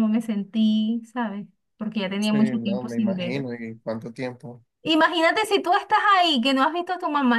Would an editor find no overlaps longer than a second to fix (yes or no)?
no